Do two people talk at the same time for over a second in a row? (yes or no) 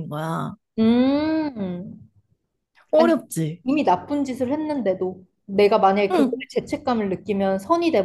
no